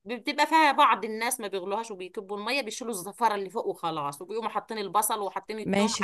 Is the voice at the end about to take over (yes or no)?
no